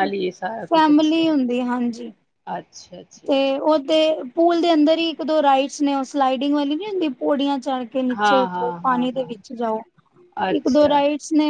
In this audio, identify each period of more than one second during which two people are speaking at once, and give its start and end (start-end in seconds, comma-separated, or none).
8.2-9.5